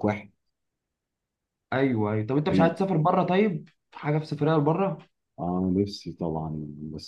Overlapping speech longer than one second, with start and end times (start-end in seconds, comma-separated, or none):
none